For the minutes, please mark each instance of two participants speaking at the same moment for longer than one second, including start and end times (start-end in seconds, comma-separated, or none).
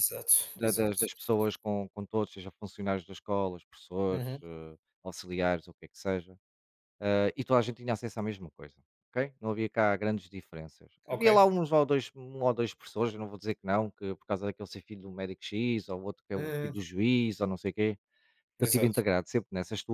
none